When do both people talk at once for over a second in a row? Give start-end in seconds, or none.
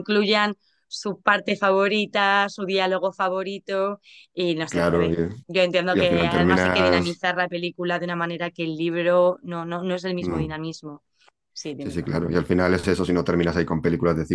5.9-7.1